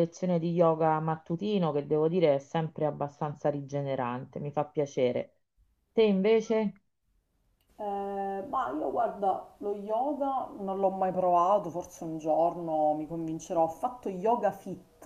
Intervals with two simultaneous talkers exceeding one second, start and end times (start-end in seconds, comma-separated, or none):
none